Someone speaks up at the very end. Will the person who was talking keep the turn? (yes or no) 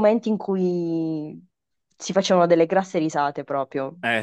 no